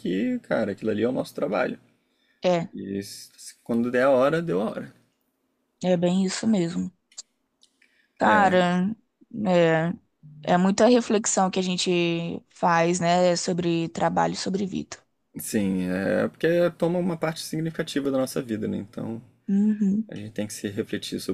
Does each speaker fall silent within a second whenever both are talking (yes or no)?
yes